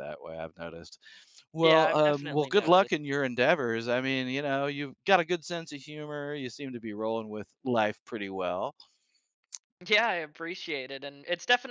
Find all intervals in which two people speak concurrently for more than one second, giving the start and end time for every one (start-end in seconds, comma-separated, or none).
1.6-2.9